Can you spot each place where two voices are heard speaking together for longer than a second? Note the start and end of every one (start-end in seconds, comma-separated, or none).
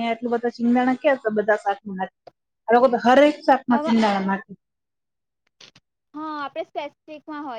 none